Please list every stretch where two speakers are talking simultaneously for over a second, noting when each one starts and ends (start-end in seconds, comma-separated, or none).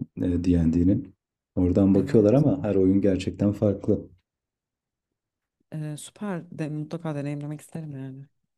none